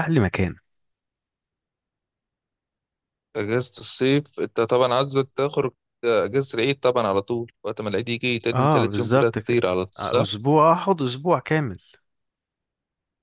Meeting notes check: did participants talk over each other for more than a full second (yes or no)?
yes